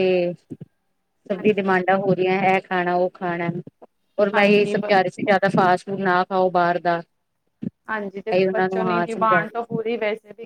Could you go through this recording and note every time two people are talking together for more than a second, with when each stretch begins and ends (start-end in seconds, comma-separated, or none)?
8.3-9.7